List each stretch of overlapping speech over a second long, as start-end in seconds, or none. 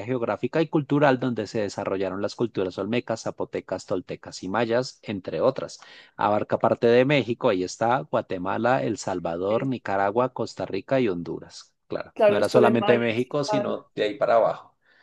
12.2-13.8